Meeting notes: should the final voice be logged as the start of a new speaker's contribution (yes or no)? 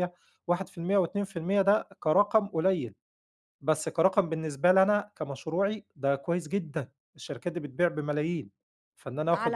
yes